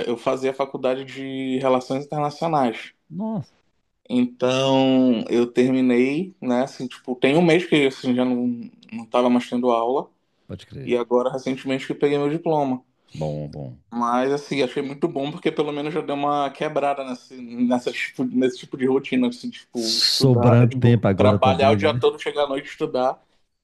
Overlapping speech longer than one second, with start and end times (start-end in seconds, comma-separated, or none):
19.8-22.0